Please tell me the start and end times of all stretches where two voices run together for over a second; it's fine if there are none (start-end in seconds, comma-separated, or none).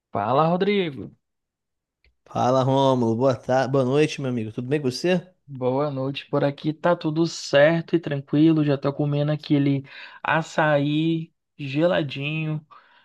none